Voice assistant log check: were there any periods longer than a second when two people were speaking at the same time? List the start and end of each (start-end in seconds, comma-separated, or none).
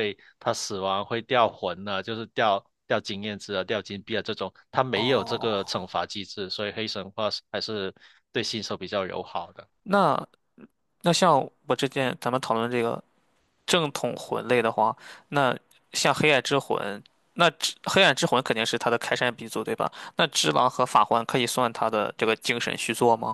none